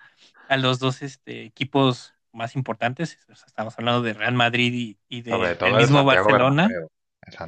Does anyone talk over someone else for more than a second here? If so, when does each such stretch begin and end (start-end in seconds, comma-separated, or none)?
5.3-6.7